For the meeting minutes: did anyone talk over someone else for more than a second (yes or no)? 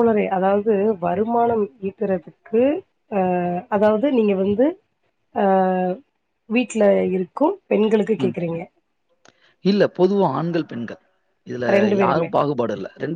no